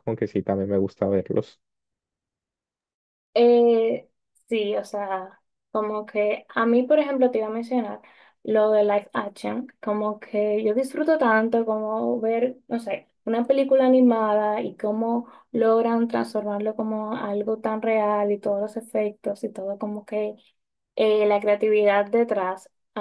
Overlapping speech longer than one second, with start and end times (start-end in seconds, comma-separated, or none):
none